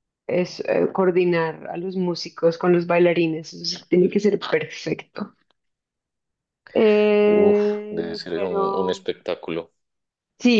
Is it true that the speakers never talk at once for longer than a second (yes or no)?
no